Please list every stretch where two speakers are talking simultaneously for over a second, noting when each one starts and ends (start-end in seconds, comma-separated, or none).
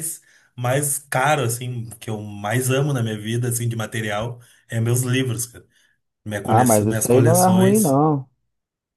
6.4-8.0